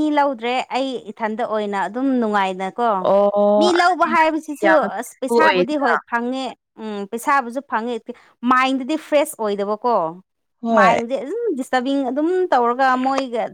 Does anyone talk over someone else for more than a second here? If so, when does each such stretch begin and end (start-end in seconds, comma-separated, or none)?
3.6-5.7